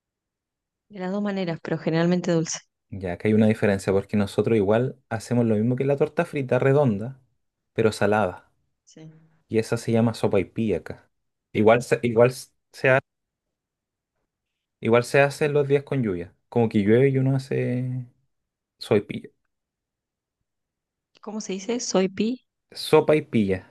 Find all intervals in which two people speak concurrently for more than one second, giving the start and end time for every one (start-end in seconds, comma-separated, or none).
none